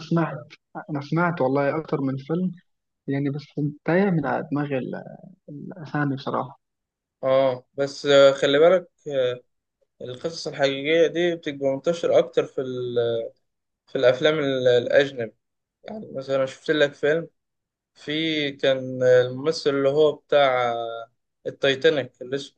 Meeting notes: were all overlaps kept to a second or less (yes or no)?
yes